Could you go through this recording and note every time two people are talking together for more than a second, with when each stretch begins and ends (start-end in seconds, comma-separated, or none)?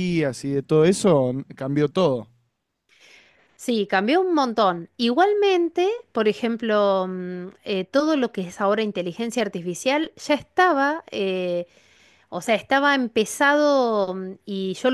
none